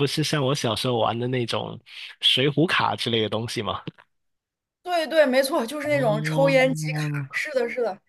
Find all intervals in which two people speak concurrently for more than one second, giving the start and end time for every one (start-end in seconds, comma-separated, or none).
5.9-7.3